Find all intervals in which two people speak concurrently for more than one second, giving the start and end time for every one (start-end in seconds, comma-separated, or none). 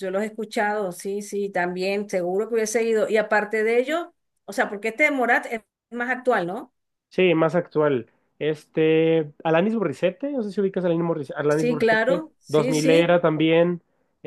11.5-13.2